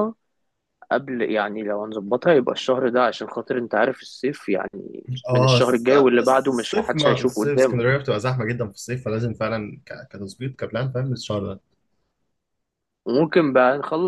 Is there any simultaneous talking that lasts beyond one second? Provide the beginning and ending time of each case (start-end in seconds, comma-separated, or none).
5.3-7.9